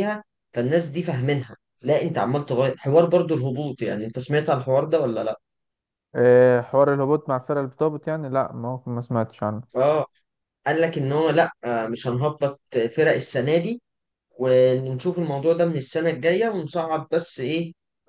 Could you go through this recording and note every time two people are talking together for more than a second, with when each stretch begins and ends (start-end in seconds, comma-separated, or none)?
none